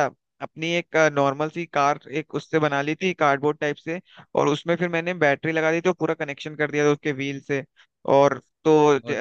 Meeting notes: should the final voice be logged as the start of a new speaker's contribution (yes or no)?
no